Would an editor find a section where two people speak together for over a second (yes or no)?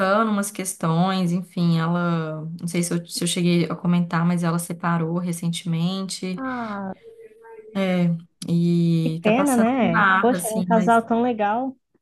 yes